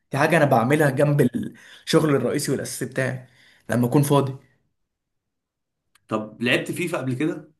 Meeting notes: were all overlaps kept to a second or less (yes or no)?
yes